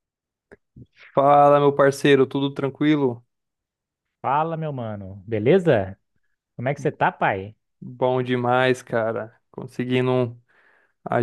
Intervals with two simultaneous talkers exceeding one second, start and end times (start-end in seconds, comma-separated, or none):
none